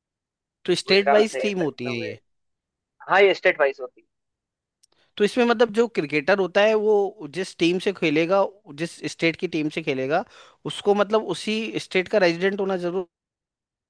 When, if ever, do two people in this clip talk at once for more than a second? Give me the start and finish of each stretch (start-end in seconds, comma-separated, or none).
0.9-2.1